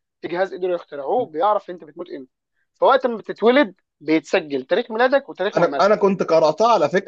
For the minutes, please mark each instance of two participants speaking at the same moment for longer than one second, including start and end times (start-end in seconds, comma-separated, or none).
none